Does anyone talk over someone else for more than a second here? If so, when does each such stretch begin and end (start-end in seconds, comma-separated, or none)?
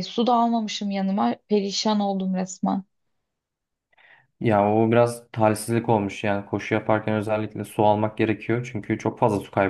none